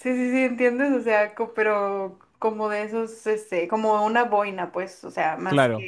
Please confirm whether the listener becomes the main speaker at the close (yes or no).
no